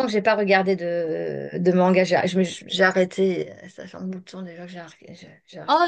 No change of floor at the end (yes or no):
no